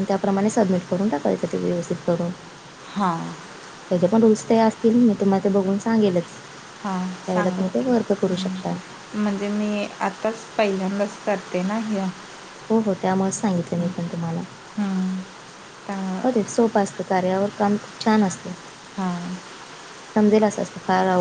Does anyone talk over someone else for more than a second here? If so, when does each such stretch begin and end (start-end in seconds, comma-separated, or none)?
none